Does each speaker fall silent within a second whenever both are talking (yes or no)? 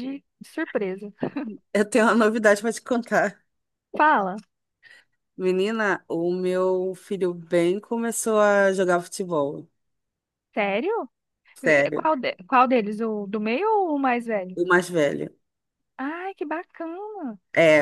yes